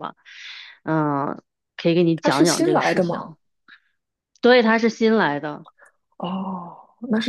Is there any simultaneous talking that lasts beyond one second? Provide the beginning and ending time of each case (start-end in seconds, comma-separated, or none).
2.1-3.4